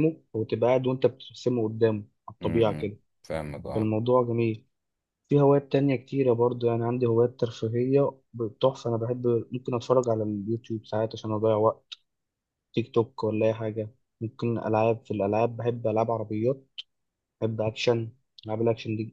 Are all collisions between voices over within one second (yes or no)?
yes